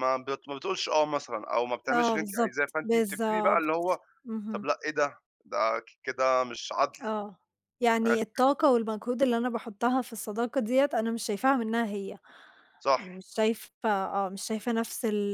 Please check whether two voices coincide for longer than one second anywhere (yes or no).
yes